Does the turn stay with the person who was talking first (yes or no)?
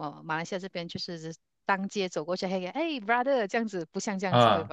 no